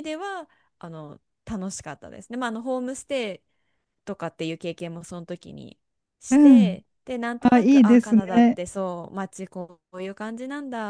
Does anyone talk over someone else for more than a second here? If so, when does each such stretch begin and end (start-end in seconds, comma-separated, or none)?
7.4-8.6